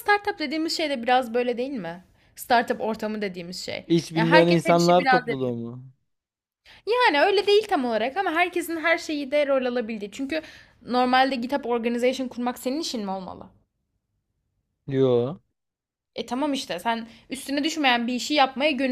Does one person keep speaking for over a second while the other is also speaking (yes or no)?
yes